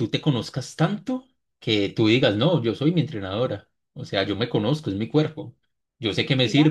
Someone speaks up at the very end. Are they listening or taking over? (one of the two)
listening